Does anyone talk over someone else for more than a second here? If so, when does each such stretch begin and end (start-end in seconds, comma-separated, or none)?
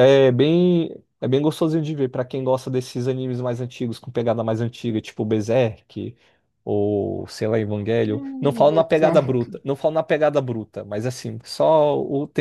8.0-9.6